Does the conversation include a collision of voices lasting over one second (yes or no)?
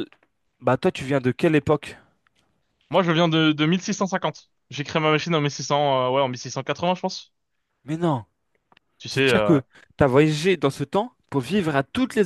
no